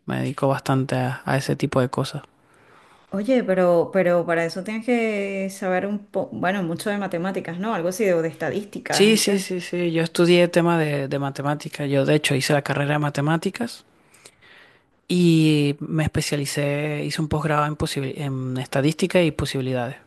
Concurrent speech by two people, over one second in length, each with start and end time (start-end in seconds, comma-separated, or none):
none